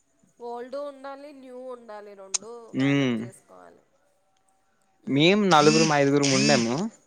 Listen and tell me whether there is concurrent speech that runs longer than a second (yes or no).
no